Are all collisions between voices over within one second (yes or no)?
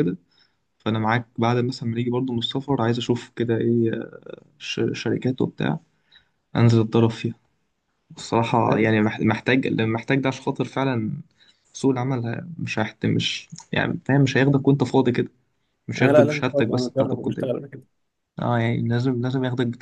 no